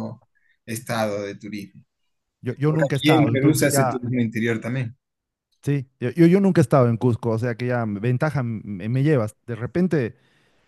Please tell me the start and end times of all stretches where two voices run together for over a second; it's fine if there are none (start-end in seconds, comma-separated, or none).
2.7-4.0